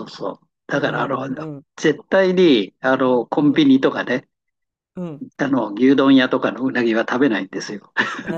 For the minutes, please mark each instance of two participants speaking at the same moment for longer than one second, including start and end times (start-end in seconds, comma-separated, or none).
none